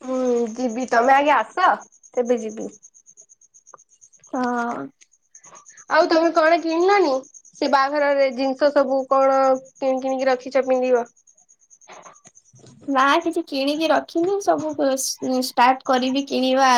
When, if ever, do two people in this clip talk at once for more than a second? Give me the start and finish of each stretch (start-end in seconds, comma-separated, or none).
none